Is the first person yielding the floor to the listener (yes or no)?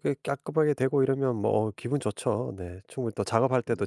no